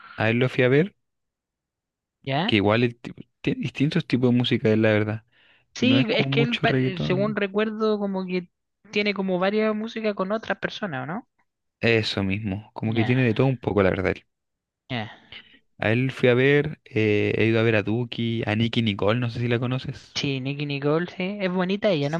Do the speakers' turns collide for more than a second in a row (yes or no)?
yes